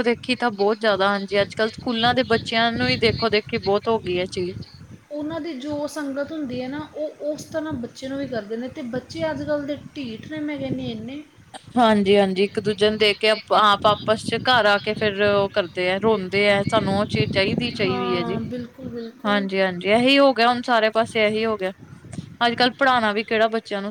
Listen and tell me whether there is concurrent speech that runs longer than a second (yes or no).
no